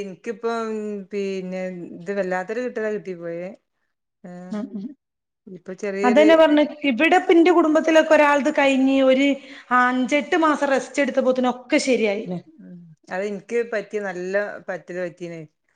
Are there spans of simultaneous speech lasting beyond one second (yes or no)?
no